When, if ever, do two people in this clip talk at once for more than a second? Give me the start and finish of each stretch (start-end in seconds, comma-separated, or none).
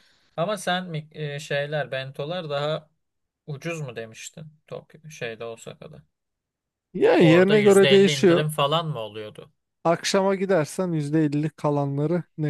7.2-8.4